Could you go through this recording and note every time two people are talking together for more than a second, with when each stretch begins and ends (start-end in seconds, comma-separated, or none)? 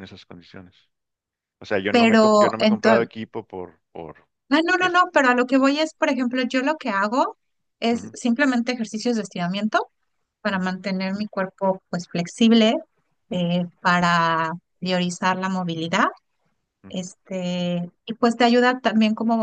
1.9-3.1